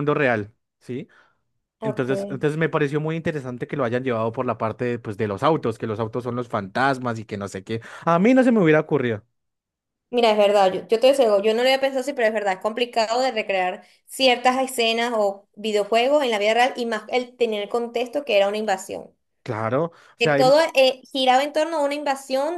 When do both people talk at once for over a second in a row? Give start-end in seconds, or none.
none